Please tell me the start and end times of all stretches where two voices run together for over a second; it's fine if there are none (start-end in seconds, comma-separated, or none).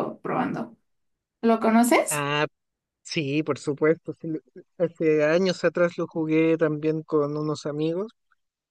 none